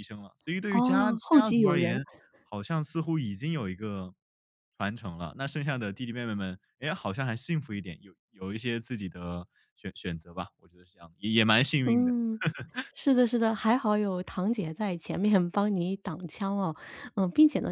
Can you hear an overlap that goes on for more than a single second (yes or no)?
yes